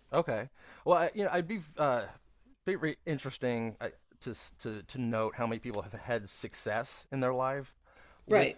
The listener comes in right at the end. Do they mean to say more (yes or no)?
no